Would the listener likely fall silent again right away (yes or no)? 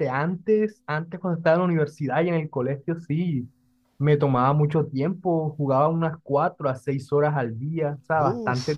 yes